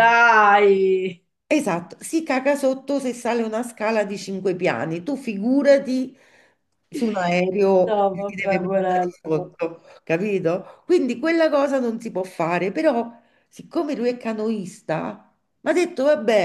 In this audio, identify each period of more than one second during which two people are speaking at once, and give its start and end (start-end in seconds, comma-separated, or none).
7.8-9.6